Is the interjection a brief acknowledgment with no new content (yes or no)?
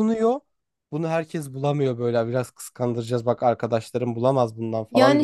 no